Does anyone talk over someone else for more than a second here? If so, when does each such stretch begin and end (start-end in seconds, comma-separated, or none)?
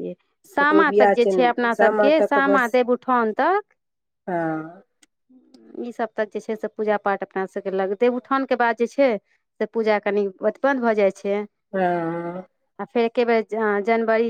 0.6-2.7